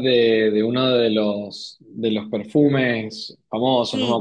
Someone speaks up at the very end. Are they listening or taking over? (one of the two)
taking over